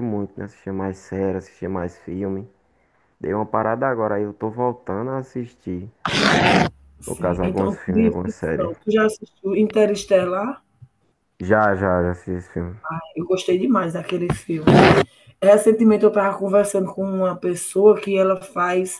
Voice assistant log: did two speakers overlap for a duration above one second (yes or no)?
yes